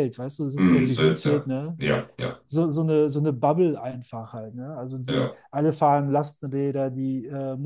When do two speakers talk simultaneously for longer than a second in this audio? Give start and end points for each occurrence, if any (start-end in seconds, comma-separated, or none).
0.6-1.8